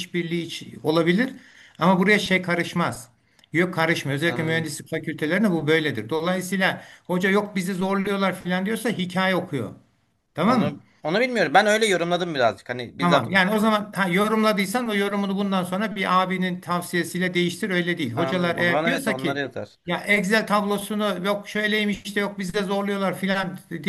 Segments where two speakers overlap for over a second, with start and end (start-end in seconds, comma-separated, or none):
18.1-19.4